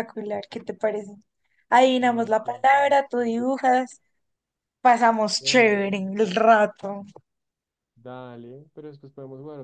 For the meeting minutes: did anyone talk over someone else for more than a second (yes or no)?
yes